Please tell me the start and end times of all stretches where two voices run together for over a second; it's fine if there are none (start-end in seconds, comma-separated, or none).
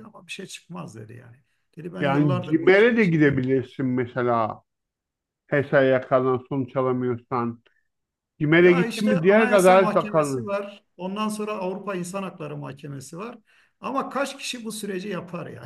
2.0-3.4, 8.6-10.5